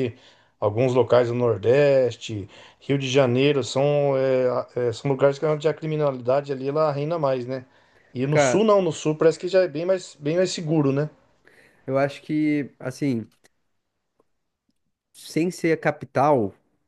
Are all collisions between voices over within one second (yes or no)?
yes